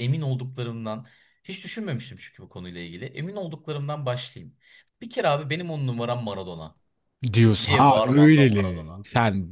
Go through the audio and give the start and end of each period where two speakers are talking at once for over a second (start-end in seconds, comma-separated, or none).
7.6-9.0